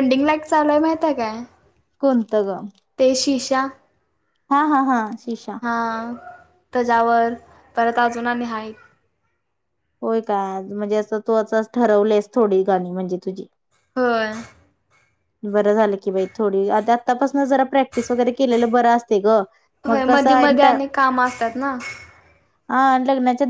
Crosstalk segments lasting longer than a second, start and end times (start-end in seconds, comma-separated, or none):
19.9-21.6